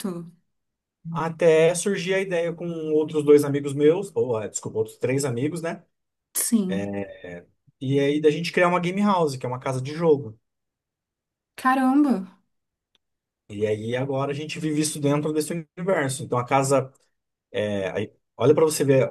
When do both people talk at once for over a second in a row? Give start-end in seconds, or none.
none